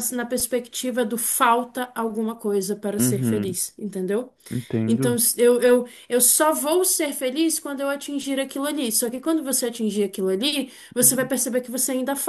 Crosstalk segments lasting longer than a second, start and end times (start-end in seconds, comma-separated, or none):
none